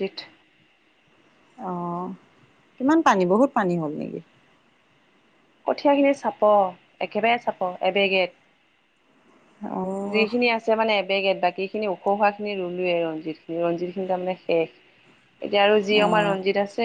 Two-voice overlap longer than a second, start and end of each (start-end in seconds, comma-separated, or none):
none